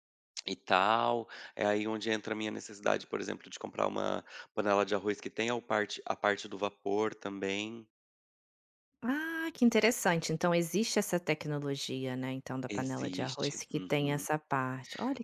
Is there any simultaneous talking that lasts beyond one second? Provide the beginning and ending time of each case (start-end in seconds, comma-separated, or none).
12.7-14.2